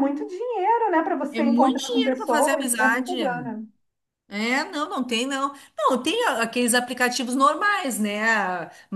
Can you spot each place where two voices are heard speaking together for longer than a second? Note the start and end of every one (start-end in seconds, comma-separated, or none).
1.3-3.2